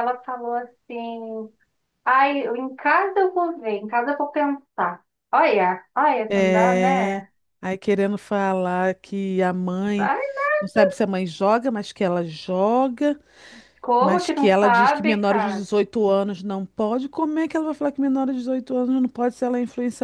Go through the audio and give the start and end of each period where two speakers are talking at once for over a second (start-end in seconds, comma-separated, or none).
14.0-15.7